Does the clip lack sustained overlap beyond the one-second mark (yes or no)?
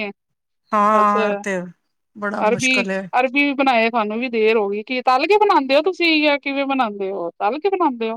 yes